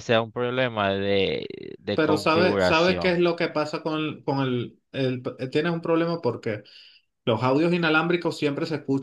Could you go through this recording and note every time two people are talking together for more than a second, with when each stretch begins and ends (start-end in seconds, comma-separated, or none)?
1.9-3.2